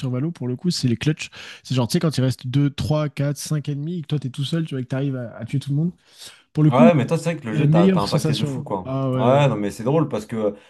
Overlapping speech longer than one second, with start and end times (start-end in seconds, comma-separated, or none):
7.5-9.4